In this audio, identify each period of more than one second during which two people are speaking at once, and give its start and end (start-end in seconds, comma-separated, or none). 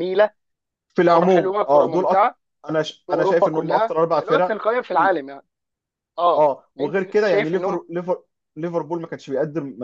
1.1-2.3, 3.0-5.2, 6.3-7.8